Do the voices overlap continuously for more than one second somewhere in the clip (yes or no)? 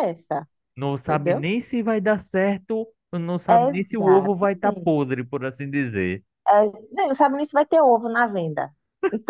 yes